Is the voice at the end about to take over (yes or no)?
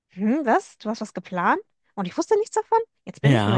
yes